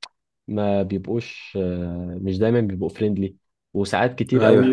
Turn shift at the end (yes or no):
no